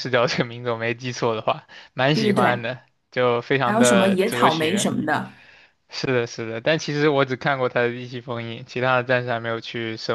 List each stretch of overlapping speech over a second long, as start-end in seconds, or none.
3.6-4.9